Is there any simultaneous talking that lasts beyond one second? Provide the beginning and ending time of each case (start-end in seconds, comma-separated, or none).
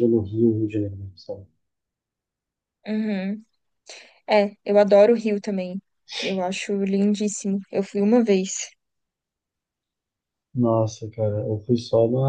none